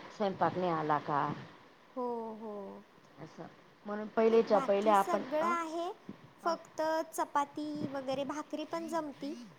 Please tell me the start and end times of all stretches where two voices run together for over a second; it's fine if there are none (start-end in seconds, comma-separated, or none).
4.3-5.5